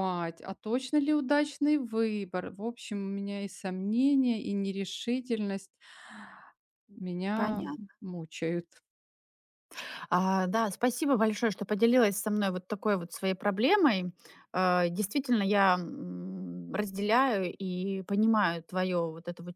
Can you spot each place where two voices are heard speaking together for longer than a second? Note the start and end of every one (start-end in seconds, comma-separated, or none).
none